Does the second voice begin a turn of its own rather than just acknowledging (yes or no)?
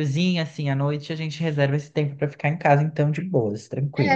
yes